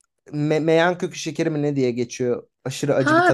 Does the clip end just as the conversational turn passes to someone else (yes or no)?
yes